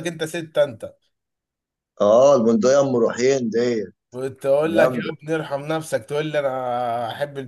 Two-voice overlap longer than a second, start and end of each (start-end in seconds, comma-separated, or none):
none